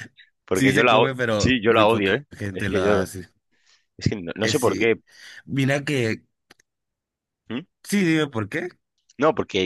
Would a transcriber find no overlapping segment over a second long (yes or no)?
no